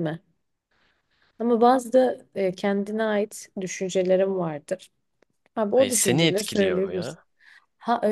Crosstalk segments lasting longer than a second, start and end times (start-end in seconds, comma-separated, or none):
5.7-7.2